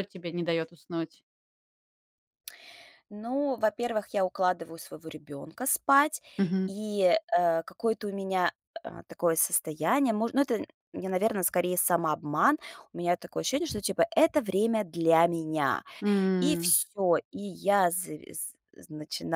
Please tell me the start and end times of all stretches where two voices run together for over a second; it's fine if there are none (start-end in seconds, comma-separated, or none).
none